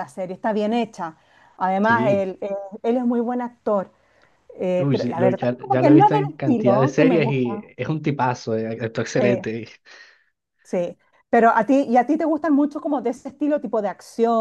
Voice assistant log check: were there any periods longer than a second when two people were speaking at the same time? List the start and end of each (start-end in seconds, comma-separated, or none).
4.8-7.7